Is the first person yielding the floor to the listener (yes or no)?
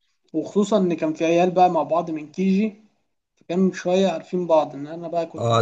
yes